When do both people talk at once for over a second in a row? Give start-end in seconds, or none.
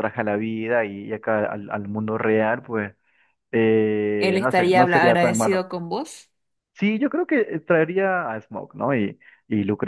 4.2-5.7